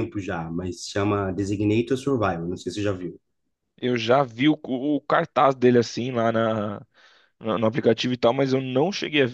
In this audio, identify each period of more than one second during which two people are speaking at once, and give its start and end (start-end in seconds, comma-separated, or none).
none